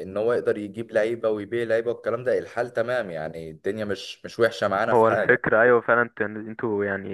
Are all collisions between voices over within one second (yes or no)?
yes